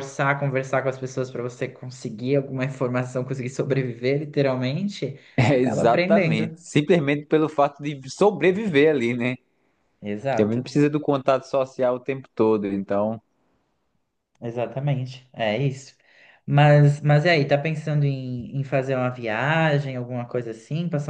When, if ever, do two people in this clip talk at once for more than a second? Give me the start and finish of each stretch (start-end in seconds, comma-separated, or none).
5.4-6.6